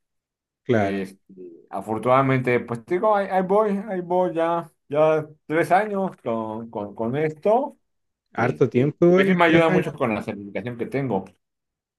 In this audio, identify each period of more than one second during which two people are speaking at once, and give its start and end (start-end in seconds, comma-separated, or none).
8.4-9.9